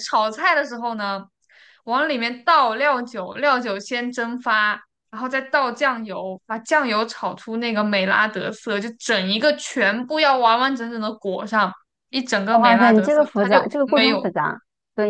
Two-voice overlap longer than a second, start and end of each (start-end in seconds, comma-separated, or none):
12.6-14.3